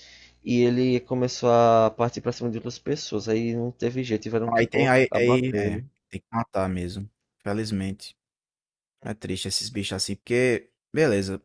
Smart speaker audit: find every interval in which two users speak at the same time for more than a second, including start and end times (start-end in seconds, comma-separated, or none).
4.5-5.8